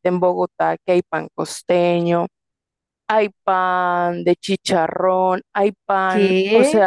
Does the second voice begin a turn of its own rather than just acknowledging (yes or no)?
no